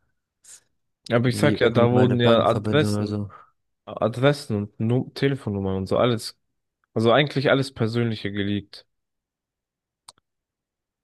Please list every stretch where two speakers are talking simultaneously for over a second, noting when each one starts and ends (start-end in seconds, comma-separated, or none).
1.2-3.2